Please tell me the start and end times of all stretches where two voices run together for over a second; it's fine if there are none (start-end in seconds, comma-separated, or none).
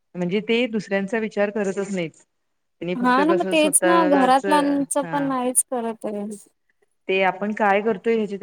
3.0-5.3